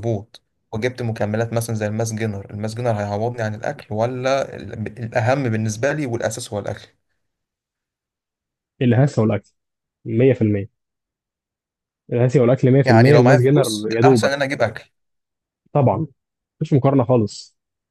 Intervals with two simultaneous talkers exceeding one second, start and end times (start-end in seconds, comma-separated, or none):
12.8-14.3